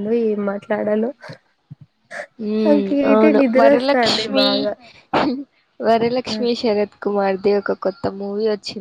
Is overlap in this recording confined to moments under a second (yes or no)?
no